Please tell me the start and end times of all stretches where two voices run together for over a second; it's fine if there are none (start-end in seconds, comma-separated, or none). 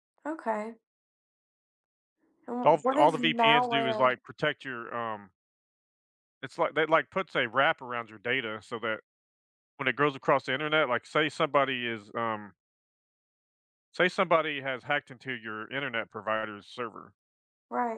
2.6-4.1